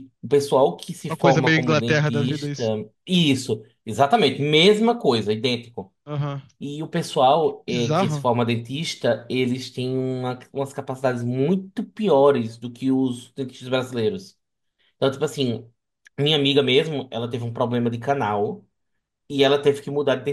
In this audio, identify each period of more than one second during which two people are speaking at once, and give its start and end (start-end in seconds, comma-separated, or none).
1.1-2.6